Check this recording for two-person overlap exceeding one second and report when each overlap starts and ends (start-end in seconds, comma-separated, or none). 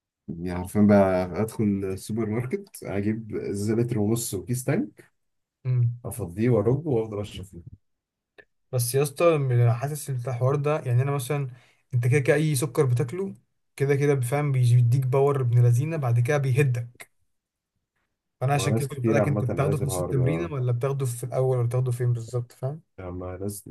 18.5-20.5